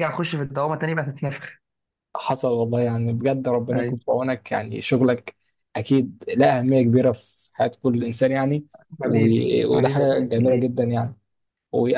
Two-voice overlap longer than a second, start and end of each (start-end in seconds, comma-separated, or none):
9.0-10.7